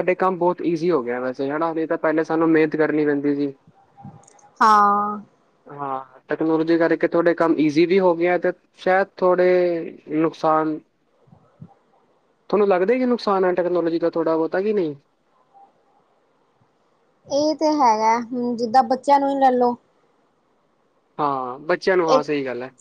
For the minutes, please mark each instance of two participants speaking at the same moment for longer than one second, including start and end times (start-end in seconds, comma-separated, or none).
none